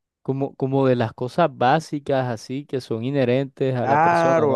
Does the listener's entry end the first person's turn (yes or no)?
yes